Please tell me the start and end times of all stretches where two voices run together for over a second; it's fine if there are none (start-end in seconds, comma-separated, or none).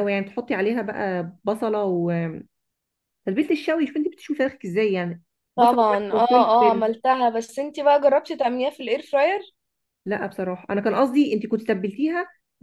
5.6-6.9